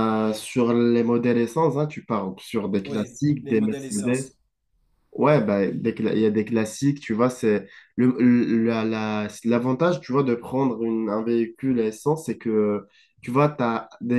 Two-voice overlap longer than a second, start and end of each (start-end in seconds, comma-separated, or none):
2.8-4.3